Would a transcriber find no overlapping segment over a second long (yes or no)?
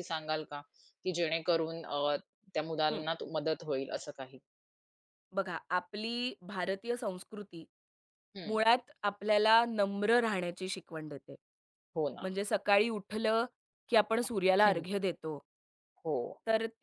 yes